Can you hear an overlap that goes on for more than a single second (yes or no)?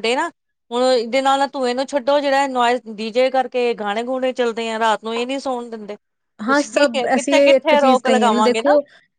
yes